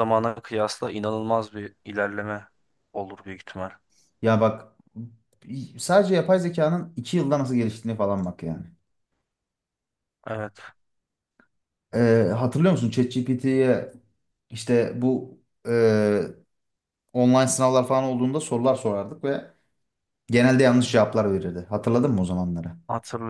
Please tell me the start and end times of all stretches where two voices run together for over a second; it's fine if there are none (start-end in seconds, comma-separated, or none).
none